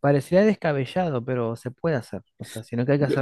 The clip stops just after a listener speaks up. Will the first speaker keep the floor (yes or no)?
yes